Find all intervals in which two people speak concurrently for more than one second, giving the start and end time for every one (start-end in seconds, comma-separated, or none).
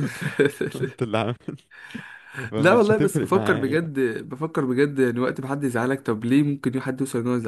2.6-3.8